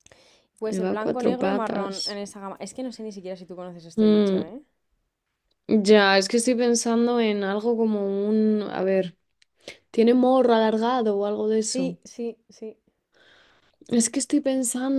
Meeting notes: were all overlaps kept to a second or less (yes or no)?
no